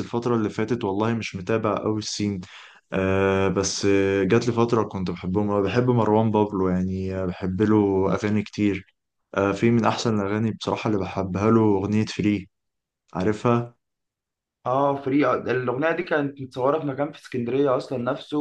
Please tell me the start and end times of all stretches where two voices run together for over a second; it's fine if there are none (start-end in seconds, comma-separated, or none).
none